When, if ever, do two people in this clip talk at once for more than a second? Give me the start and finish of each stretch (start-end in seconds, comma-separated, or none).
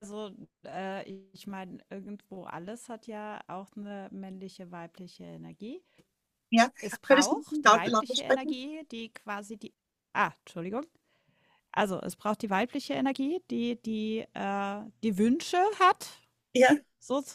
6.8-8.6